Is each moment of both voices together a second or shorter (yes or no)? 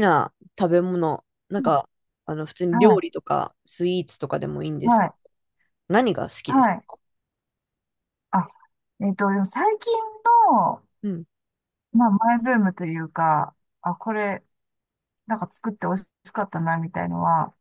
yes